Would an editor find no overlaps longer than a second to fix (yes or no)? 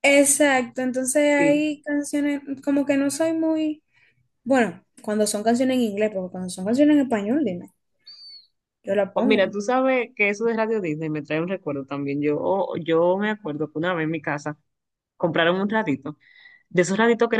yes